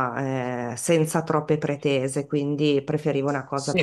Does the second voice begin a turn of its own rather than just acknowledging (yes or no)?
yes